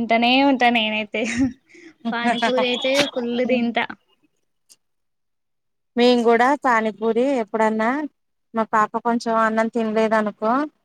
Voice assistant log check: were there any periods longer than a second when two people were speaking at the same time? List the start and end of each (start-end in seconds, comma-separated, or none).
none